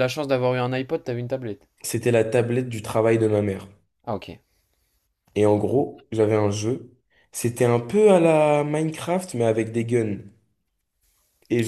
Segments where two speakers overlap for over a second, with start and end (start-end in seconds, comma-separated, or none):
none